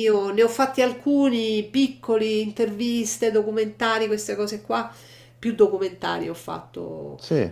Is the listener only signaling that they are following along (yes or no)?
yes